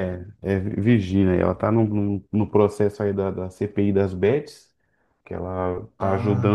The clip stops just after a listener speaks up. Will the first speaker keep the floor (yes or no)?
yes